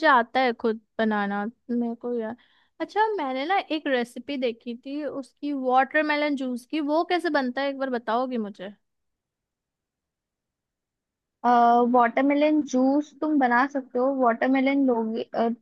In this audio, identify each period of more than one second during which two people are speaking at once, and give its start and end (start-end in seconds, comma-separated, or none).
none